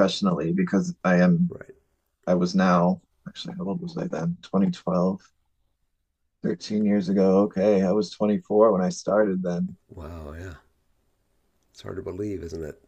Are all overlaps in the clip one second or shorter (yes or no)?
yes